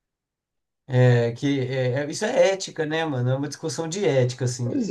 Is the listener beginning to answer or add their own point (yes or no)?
no